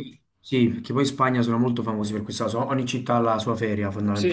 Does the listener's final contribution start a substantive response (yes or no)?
yes